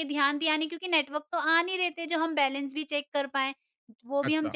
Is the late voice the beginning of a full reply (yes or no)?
no